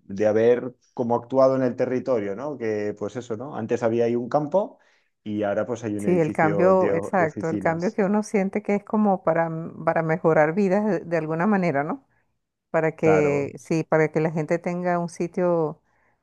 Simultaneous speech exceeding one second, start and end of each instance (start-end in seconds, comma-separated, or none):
6.0-8.0